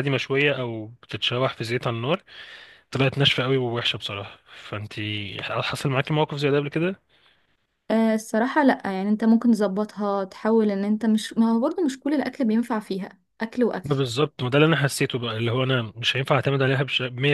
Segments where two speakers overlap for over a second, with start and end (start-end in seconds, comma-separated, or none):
none